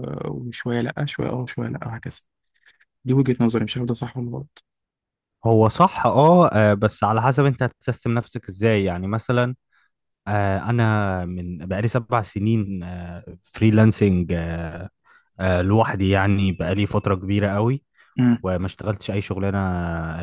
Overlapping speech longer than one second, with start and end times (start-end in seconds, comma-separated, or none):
none